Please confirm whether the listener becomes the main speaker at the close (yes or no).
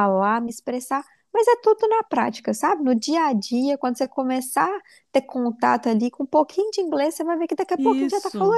yes